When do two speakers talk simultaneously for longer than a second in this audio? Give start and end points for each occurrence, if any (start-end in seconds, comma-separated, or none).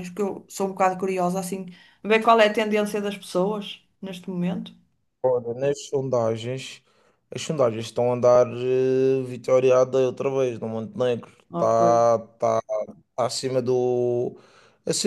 none